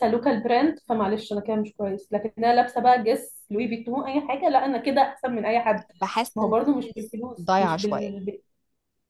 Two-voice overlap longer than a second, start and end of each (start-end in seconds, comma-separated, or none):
6.3-8.1